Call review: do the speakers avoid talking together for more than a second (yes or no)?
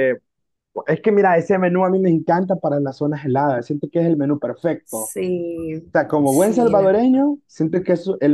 no